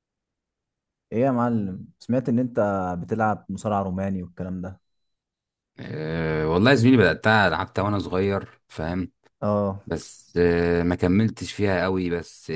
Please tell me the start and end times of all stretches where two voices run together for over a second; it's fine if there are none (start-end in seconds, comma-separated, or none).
none